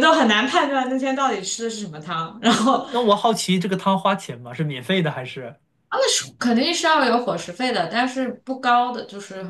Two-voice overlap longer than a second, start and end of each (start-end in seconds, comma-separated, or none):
none